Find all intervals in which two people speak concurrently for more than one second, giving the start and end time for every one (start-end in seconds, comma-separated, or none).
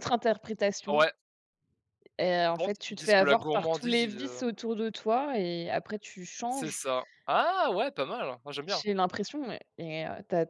2.5-4.4